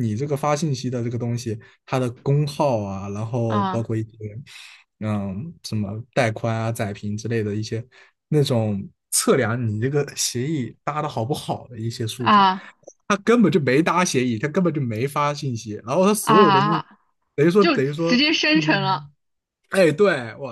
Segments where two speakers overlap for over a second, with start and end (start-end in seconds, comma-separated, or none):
17.6-19.1